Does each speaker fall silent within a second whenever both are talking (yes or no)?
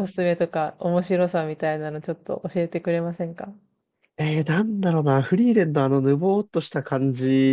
yes